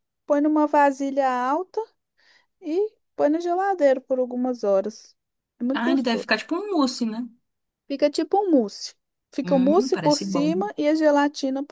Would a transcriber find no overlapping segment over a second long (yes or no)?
no